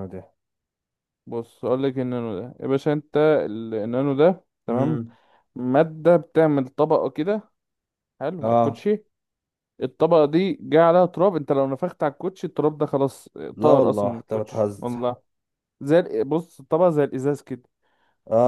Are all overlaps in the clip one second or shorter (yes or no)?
no